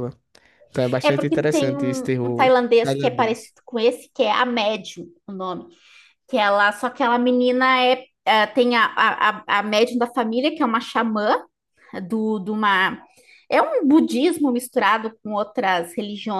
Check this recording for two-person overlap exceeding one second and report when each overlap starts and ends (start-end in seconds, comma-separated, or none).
1.0-3.5